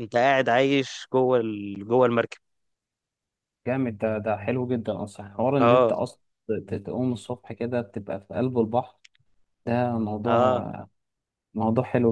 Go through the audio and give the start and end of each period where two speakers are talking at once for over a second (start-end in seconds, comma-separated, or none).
none